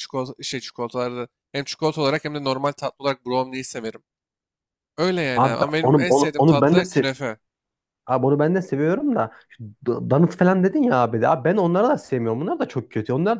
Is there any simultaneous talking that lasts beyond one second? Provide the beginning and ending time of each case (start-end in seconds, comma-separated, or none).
5.3-7.0